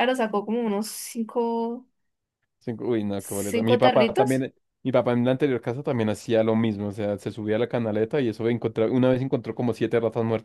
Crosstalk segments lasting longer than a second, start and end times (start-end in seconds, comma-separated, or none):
3.2-4.5